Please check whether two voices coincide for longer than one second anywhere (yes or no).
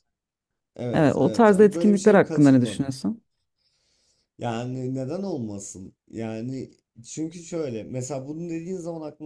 yes